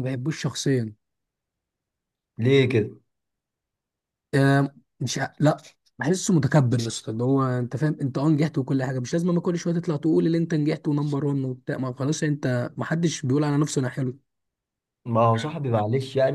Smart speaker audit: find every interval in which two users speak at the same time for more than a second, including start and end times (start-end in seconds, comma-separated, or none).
none